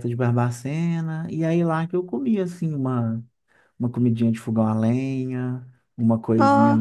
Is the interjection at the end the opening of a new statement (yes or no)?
no